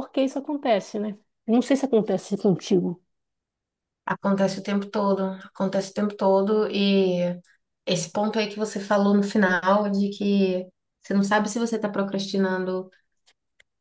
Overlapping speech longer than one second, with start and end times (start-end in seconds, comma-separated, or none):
none